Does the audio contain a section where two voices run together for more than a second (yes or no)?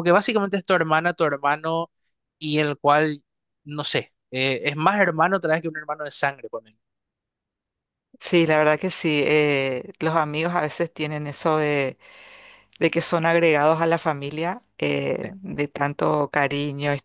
no